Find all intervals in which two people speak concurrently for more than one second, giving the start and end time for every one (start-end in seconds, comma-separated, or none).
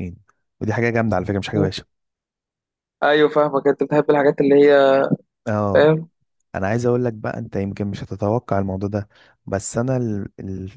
none